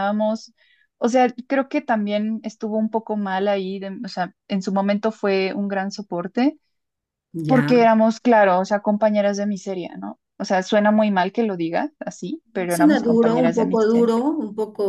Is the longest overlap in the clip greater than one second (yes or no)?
yes